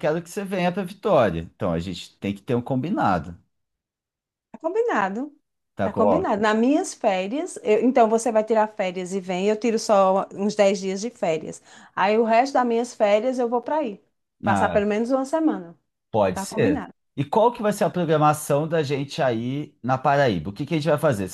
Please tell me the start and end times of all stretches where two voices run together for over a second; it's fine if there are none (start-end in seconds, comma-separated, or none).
none